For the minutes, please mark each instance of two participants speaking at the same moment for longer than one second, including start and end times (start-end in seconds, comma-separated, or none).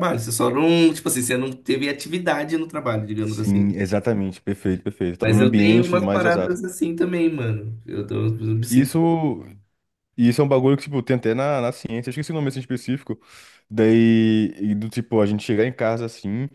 5.2-6.6